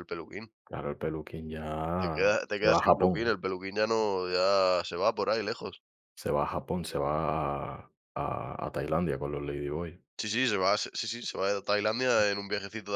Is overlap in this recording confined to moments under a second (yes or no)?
no